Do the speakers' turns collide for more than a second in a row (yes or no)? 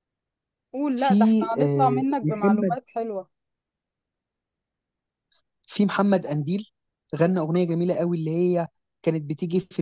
yes